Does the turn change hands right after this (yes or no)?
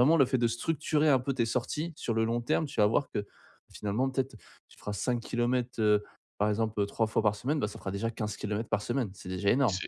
no